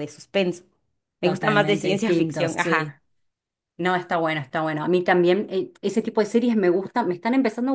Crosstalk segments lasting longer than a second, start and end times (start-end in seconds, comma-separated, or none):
1.2-3.0